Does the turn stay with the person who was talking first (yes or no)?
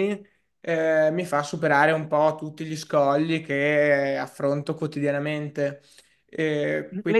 no